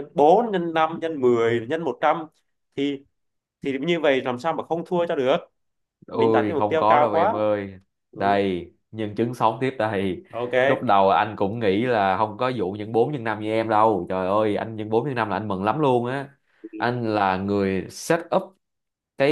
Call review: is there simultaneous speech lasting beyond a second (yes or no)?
yes